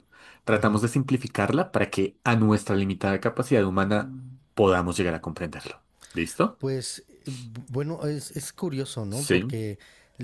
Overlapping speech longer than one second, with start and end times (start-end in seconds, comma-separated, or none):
none